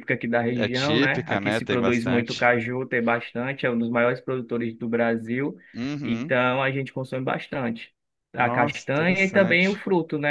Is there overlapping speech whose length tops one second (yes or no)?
yes